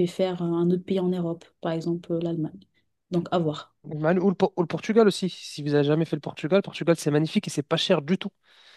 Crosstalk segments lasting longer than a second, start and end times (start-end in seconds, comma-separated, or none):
none